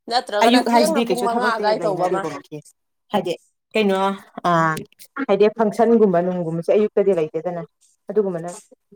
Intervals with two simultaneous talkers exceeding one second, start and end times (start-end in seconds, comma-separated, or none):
0.7-2.2